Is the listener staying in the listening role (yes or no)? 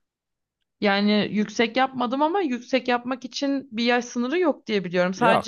yes